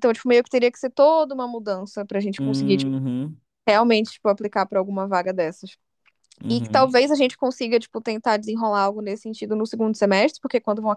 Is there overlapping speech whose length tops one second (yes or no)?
no